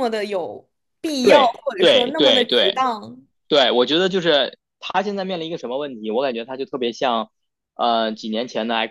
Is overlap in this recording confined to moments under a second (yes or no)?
no